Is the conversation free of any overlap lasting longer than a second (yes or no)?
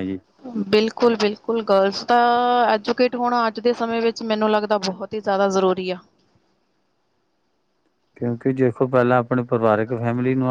yes